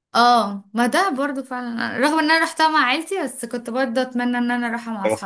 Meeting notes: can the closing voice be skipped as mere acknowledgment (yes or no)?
no